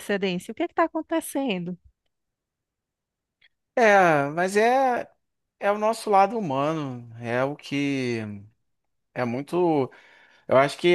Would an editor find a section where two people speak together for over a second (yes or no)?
no